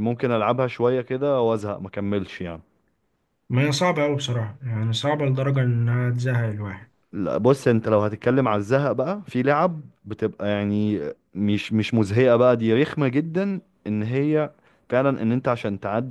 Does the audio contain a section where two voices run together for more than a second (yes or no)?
no